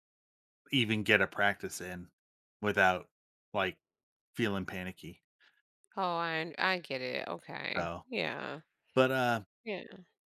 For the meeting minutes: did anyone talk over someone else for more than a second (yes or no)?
no